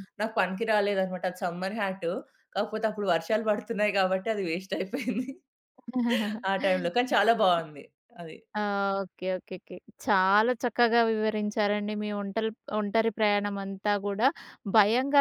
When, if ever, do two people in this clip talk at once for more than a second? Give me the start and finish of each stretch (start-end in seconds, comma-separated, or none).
none